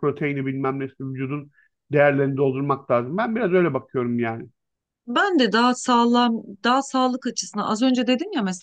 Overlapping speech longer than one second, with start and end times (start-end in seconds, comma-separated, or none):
none